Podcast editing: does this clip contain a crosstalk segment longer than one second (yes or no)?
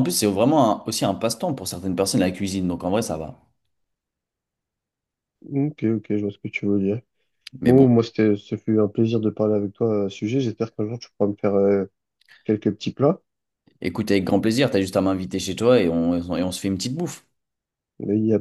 no